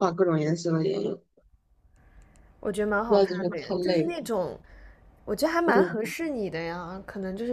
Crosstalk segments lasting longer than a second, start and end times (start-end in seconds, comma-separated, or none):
3.0-4.2